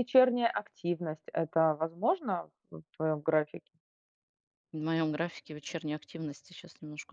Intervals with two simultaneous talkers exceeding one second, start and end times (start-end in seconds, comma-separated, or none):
none